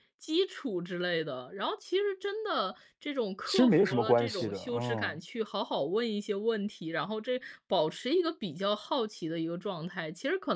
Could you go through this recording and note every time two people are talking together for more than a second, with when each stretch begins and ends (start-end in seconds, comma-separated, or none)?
3.4-5.2